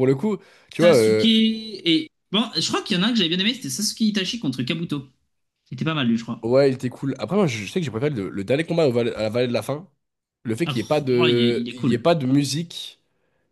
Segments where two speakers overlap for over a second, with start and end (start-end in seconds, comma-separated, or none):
10.7-12.1